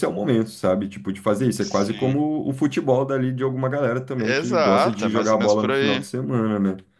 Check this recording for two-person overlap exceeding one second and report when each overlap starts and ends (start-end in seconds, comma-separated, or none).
4.2-6.0